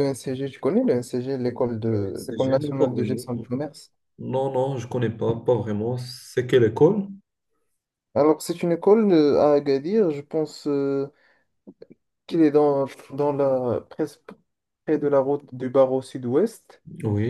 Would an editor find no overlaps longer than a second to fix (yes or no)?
no